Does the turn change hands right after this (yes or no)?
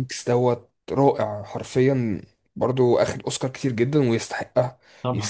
no